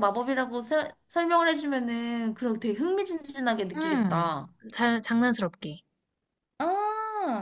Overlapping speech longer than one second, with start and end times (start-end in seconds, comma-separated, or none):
none